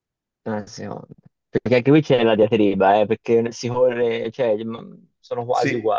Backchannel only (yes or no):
no